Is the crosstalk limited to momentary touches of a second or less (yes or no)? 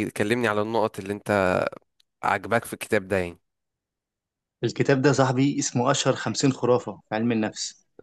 yes